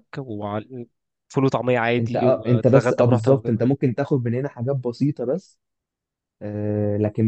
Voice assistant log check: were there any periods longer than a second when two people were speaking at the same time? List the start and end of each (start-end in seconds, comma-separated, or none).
2.0-3.6